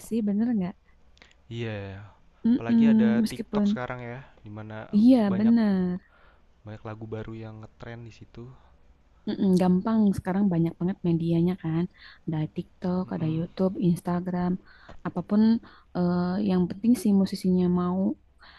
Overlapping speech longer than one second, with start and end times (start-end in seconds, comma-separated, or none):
2.5-3.8